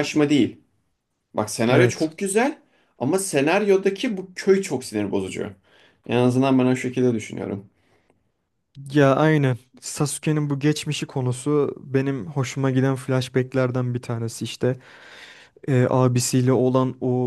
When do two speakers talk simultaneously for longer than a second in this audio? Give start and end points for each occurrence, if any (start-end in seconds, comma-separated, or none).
none